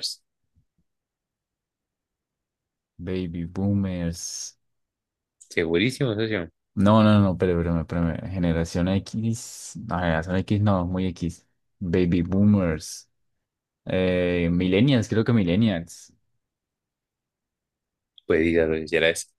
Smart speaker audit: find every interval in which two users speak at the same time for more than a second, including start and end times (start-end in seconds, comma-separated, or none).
none